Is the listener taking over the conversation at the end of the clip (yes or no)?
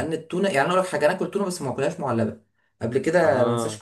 no